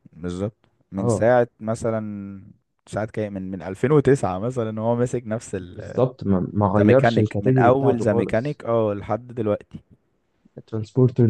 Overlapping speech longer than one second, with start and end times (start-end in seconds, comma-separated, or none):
6.8-8.6